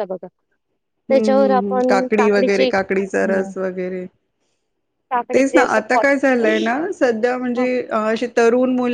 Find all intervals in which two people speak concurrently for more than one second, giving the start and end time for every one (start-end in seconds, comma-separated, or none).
1.1-3.5, 5.3-6.7